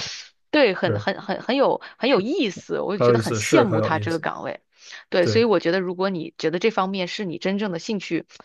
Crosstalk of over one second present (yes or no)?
yes